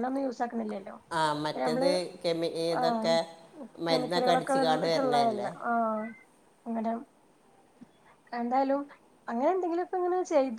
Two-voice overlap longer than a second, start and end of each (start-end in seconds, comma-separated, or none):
3.9-5.5